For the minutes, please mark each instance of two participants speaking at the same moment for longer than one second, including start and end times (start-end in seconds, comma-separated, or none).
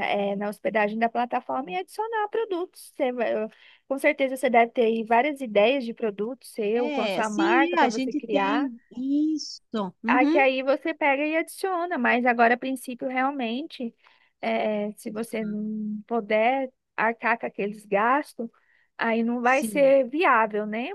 6.7-8.7